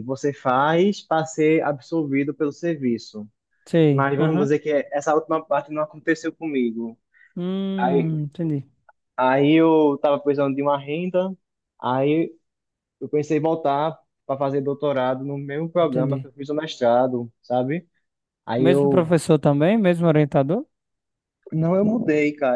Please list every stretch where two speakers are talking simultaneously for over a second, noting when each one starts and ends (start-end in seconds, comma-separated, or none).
none